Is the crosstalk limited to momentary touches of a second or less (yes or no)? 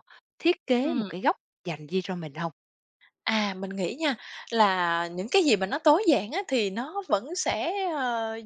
yes